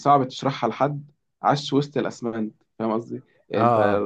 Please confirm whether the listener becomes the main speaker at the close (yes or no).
no